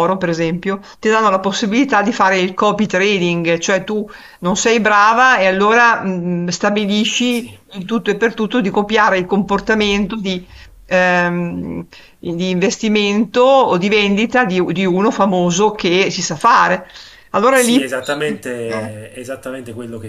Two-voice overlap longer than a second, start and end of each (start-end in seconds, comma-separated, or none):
none